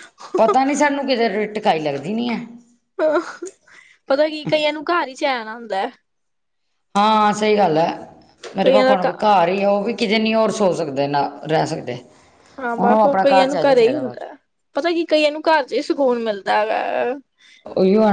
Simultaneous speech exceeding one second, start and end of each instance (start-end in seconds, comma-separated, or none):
12.8-14.3